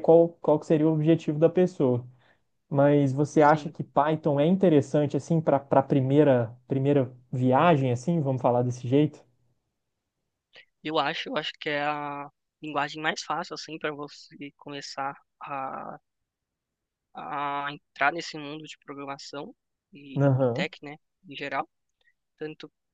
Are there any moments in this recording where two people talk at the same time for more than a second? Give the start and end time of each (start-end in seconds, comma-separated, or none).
none